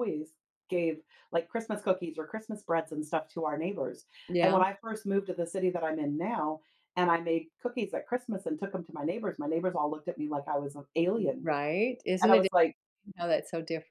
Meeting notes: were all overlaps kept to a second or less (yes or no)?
yes